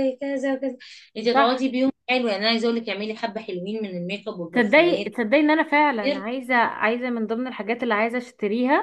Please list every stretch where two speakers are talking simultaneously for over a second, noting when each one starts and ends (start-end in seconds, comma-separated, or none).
none